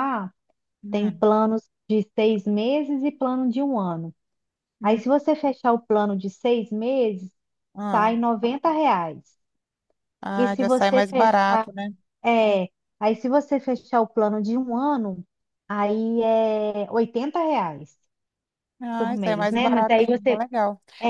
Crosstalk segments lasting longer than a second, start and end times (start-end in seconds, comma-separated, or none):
10.3-11.7, 18.9-20.4